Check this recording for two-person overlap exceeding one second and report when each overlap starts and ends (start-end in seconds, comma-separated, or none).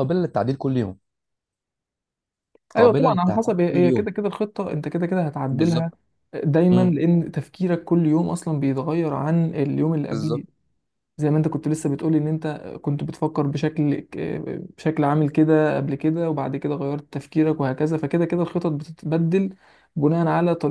2.8-4.1